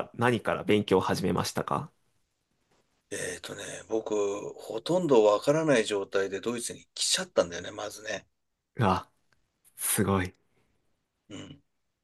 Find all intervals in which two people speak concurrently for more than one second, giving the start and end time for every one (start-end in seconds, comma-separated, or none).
none